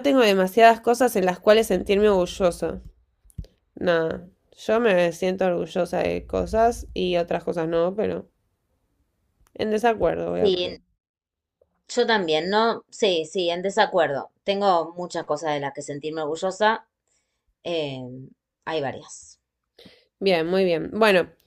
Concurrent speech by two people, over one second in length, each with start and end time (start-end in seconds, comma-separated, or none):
none